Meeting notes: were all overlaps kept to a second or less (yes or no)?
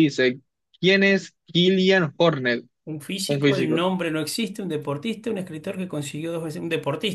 yes